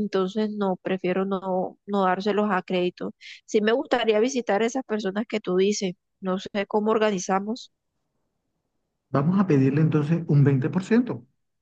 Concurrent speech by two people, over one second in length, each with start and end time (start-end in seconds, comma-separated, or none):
none